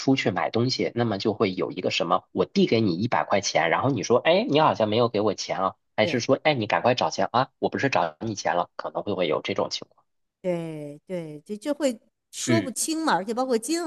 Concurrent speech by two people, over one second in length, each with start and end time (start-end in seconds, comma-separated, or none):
none